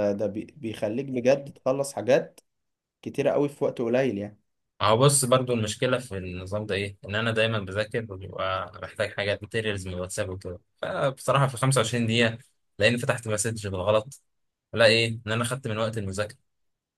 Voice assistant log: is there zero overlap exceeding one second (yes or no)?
yes